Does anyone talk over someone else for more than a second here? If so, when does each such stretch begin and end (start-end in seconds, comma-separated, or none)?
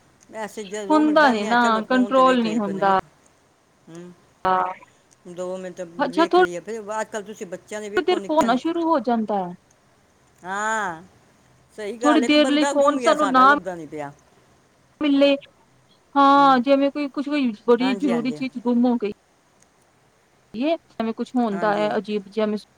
0.9-2.9, 12.0-13.5